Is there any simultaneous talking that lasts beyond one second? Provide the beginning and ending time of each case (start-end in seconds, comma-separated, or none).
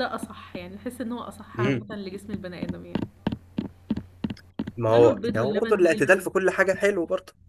4.9-6.2